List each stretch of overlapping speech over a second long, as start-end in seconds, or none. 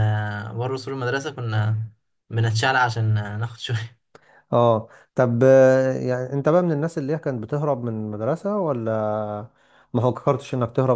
none